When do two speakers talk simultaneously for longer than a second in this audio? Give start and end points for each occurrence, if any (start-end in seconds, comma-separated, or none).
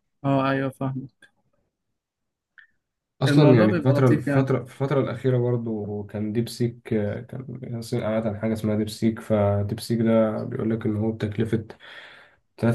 3.3-4.5